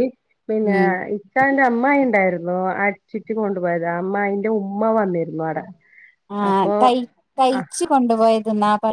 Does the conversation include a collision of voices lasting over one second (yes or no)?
no